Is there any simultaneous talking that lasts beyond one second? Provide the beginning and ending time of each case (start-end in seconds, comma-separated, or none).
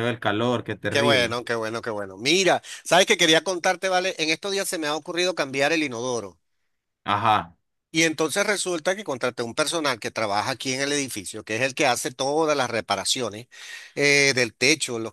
none